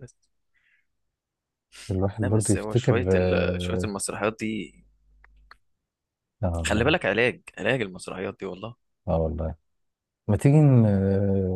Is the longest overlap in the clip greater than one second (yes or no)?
yes